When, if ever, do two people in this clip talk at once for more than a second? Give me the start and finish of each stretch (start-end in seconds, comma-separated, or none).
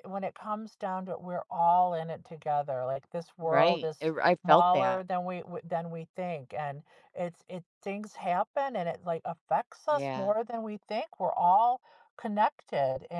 3.4-5.0